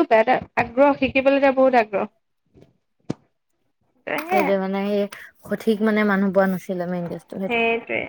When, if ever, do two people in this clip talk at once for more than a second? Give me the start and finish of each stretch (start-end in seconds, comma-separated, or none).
none